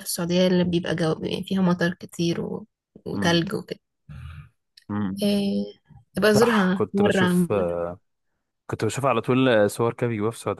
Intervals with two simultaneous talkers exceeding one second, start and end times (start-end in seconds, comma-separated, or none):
6.3-7.7